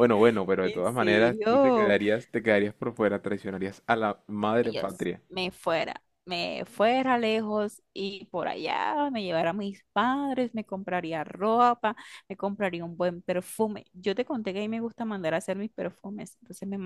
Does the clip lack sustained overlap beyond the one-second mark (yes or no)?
no